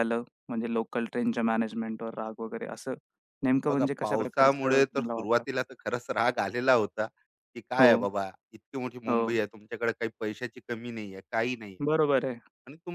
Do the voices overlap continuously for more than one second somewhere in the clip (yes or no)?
yes